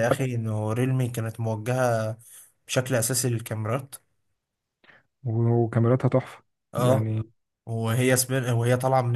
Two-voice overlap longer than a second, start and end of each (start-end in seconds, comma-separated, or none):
none